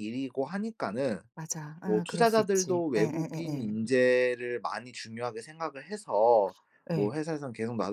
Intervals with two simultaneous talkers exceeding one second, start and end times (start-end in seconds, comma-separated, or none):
1.9-3.8